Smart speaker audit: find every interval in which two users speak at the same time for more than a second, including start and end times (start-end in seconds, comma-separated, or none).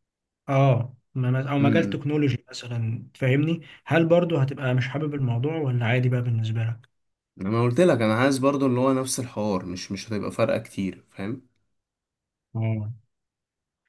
none